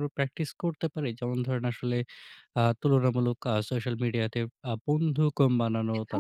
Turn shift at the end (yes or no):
no